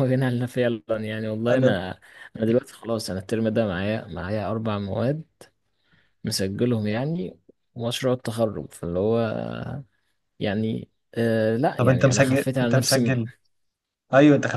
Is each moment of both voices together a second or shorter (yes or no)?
no